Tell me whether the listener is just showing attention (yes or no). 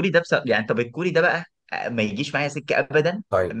yes